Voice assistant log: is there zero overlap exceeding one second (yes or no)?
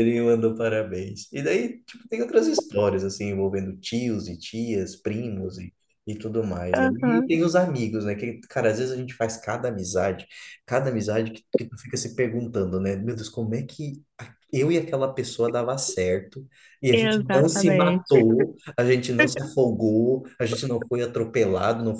no